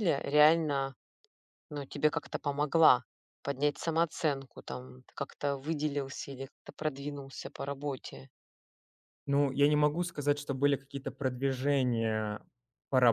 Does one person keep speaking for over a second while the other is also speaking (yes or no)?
no